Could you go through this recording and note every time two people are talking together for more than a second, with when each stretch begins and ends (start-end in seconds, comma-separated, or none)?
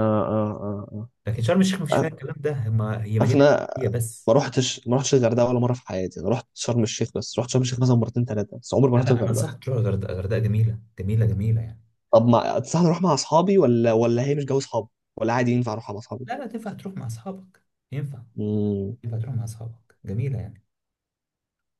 none